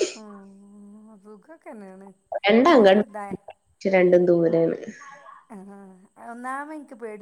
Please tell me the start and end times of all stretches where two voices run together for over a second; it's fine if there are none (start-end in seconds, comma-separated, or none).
none